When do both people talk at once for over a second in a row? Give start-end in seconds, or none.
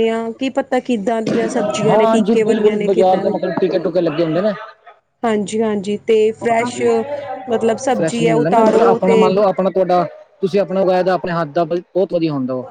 1.8-3.3, 8.0-9.2